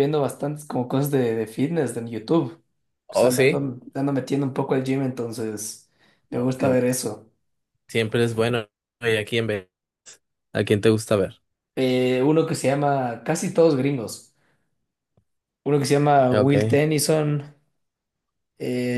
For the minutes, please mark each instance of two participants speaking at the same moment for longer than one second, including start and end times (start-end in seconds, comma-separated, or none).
none